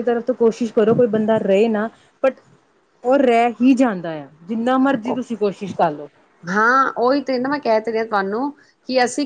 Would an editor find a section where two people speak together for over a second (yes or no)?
no